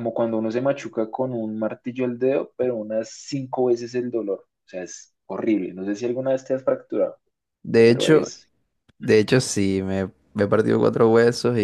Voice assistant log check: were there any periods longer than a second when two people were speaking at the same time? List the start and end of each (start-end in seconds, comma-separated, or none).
none